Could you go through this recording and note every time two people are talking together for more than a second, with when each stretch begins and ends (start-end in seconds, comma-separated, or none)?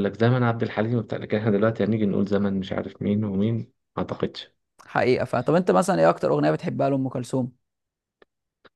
none